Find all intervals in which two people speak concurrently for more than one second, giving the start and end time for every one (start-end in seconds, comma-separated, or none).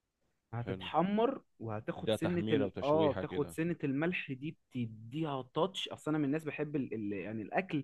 2.0-3.6